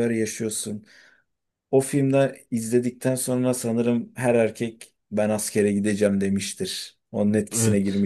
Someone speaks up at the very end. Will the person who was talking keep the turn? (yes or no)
no